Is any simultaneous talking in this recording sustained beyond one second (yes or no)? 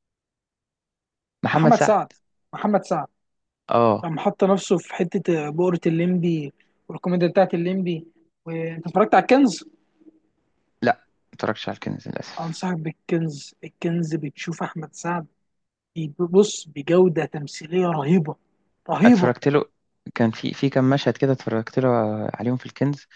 no